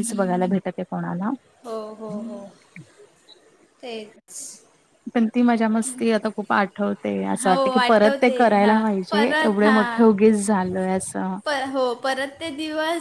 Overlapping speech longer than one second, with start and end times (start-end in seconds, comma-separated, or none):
7.4-9.9